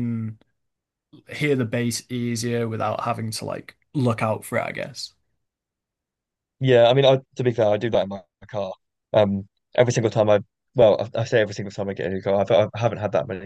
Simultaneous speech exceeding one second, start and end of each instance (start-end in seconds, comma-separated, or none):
none